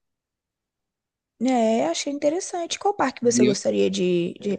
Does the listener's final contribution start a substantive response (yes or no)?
yes